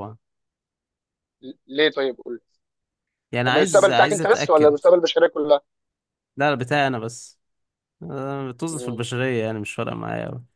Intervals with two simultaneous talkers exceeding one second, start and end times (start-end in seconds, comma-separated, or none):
3.5-4.8